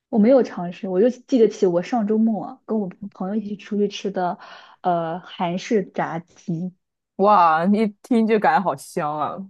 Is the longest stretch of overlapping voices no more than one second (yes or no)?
yes